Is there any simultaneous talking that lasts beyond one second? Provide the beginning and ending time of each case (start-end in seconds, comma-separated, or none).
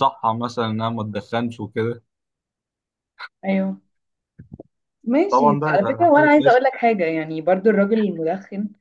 5.3-6.6